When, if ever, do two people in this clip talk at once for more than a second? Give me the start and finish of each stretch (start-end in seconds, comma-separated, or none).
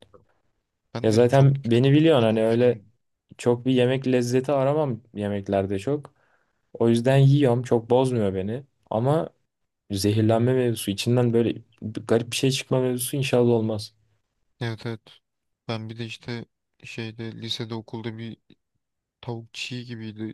1.0-2.8